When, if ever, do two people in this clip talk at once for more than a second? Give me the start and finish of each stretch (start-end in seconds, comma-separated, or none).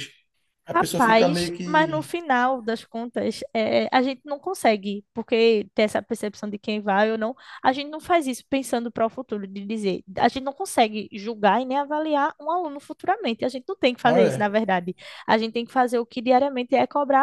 0.7-2.0